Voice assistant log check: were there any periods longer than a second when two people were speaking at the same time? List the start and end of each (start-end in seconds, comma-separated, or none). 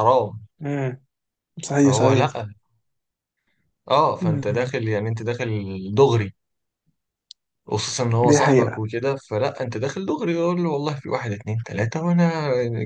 none